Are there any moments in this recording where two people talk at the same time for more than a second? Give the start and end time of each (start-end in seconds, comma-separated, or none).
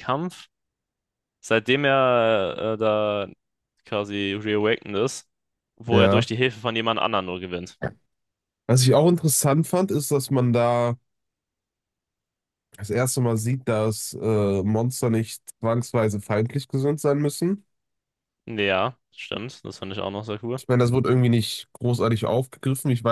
none